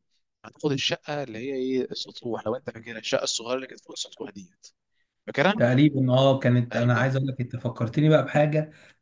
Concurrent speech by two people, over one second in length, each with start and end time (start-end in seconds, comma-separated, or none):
none